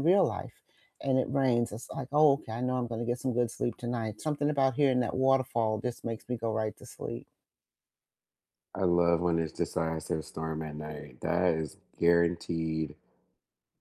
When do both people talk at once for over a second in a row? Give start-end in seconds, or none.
none